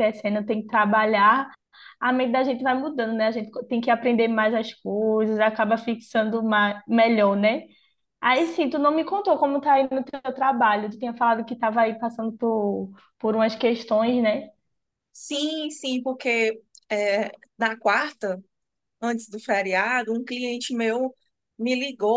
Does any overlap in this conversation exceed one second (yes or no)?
no